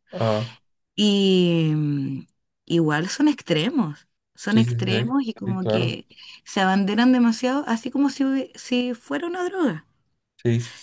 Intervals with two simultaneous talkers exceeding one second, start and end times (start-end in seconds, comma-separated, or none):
4.5-6.0